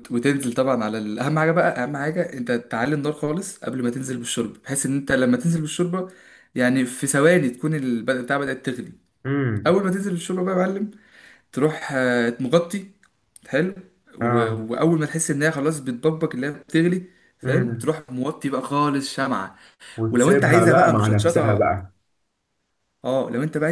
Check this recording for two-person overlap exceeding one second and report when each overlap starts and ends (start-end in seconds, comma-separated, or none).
20.1-21.7